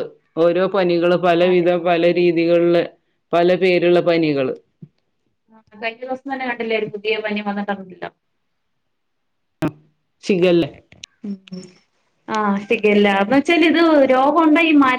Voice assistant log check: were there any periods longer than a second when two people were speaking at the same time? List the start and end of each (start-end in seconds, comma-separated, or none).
none